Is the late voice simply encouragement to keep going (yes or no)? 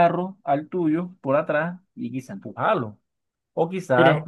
yes